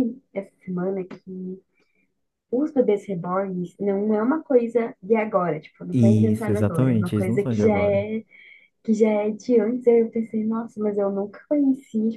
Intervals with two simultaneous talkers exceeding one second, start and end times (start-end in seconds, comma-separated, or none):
5.9-8.1